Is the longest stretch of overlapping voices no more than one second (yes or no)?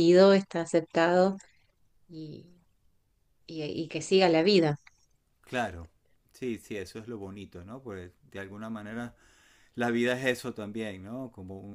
yes